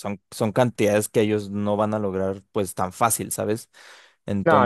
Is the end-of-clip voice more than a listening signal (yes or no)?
no